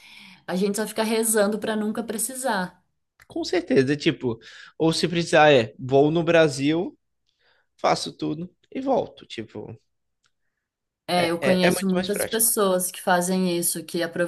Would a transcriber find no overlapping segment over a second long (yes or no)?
no